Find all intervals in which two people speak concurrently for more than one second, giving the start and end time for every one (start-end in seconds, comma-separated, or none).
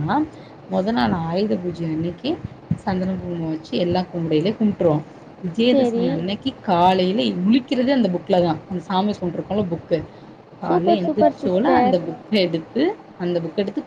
10.7-11.9